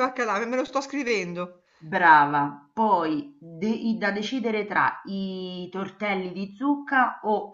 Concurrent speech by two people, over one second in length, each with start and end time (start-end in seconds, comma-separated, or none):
none